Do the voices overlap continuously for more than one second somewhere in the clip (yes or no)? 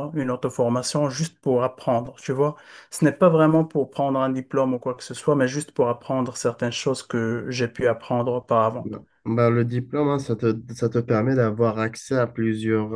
no